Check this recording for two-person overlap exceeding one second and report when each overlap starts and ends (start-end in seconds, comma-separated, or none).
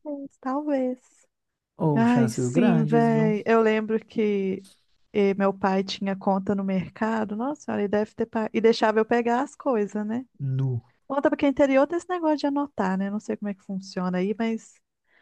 1.9-3.3